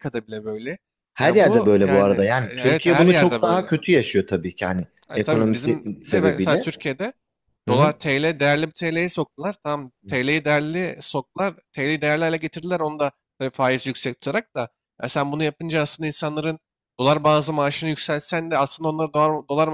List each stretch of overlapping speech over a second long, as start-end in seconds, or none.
1.2-3.8, 5.1-6.7